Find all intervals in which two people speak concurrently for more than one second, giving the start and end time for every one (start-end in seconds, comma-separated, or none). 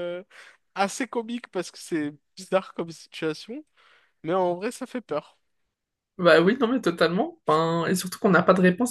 none